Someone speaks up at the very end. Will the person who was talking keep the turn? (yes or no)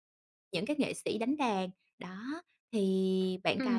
no